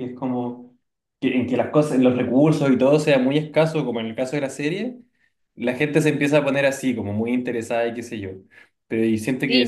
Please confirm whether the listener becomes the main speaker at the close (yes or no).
yes